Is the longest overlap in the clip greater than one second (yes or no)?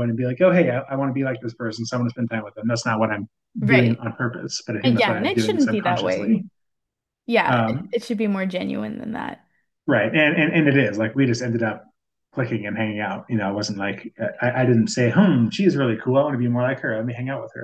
yes